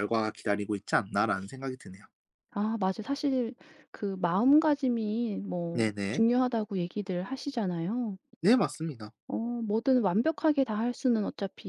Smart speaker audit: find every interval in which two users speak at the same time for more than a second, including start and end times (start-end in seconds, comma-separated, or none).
none